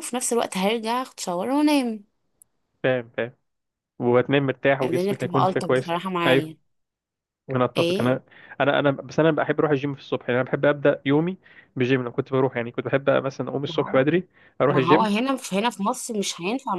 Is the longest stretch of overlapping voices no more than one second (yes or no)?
no